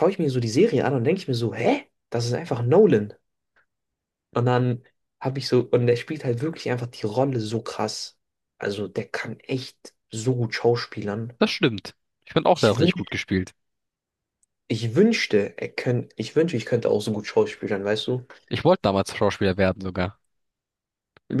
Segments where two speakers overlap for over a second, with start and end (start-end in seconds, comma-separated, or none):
none